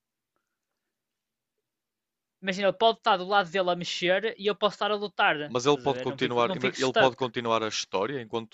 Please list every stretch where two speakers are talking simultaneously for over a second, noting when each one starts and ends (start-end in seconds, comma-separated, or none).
5.4-7.2